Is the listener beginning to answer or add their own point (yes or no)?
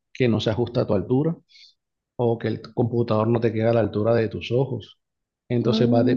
no